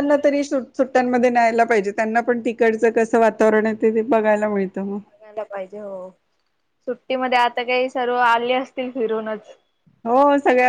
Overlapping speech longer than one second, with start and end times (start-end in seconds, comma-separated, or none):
none